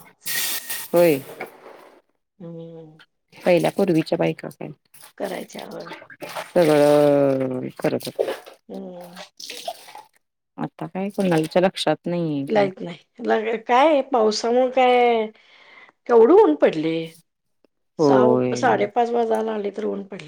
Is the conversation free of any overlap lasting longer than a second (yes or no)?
yes